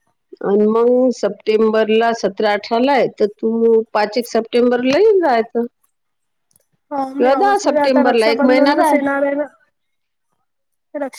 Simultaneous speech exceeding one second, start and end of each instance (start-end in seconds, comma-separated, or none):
7.2-9.0